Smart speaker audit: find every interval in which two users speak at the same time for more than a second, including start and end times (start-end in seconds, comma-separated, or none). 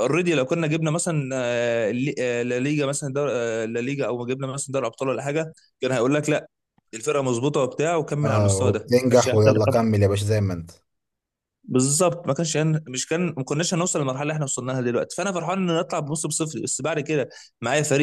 8.2-9.5